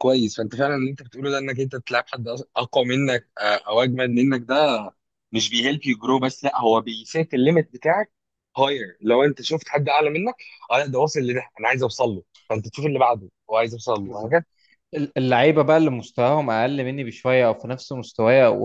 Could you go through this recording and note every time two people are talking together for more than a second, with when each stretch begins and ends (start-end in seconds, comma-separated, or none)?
none